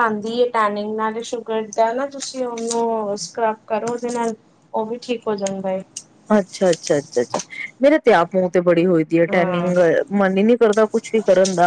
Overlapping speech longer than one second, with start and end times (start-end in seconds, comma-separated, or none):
none